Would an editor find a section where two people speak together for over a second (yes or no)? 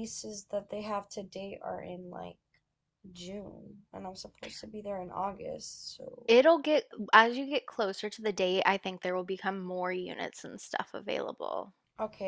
no